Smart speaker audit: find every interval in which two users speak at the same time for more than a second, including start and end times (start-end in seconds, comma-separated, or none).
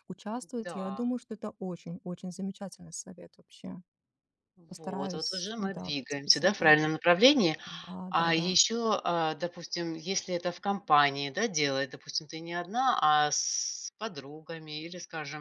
4.7-6.8